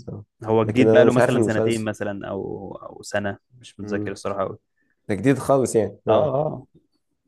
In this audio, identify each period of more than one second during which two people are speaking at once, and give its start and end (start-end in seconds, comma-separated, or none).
0.6-1.9